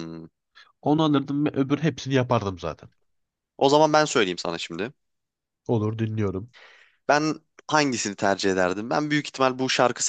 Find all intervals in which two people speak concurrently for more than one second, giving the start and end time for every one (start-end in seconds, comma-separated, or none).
none